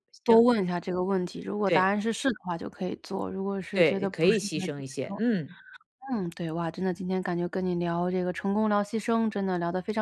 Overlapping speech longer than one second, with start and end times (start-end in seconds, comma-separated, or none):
3.7-5.2